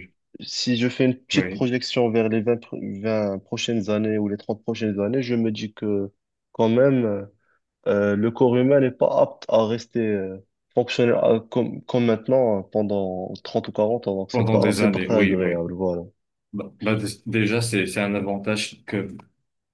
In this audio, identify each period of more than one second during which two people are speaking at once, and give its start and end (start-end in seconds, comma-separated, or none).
14.3-15.6